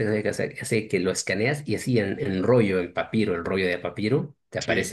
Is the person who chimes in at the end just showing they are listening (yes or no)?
yes